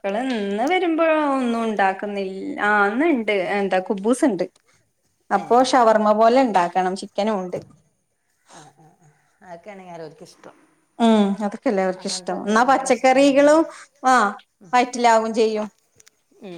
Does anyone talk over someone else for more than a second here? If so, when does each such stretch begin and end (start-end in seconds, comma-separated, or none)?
12.0-13.5